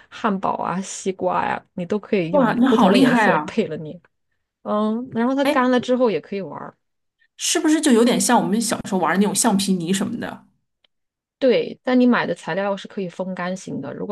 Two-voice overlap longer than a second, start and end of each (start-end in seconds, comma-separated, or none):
2.3-3.6